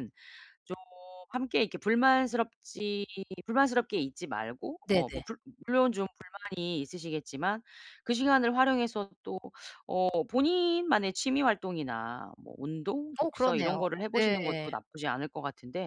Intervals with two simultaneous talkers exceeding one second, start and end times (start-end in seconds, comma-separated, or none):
13.2-14.7